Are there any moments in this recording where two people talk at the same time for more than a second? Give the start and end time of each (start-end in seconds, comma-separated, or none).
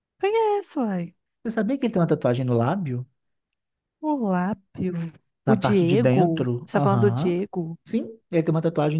5.5-7.4